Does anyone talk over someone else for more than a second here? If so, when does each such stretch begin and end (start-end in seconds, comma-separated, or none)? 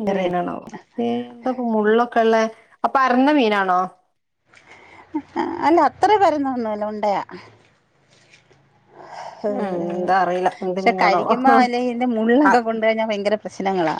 9.5-11.3